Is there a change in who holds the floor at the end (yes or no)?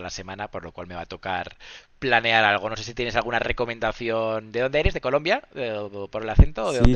yes